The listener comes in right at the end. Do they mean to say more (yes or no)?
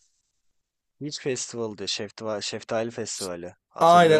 yes